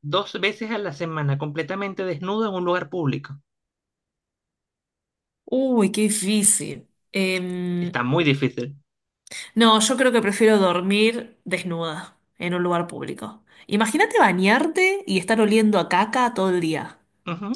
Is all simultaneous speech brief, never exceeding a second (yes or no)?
yes